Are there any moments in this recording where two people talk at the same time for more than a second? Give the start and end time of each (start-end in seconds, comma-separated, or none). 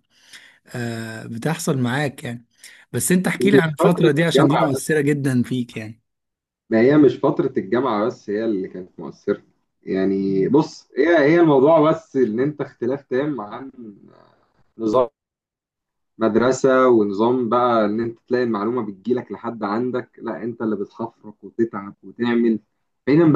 3.4-4.9